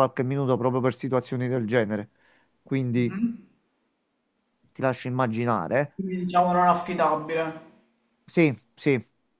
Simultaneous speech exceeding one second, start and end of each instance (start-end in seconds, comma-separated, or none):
none